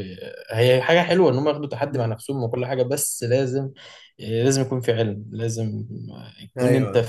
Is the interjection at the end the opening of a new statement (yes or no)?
no